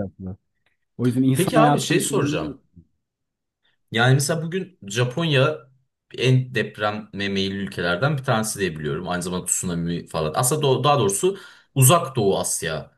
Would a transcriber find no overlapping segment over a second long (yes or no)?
no